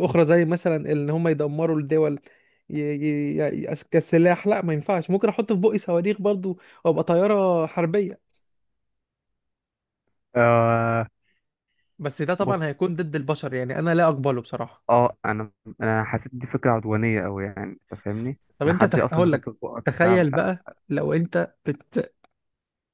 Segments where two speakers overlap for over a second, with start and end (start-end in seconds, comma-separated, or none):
18.6-20.5